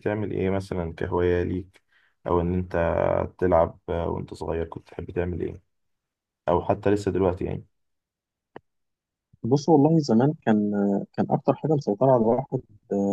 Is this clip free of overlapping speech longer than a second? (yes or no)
yes